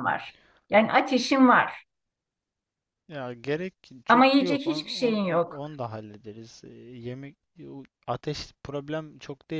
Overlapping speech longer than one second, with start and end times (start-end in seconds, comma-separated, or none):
4.1-5.6